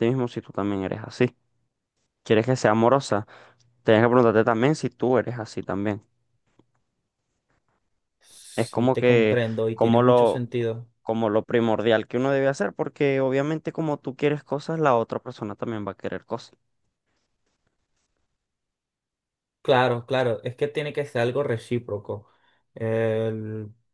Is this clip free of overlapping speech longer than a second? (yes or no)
no